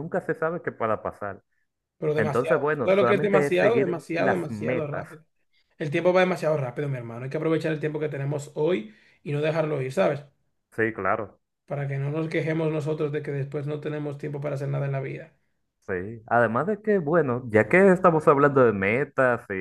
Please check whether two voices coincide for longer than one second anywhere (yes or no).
yes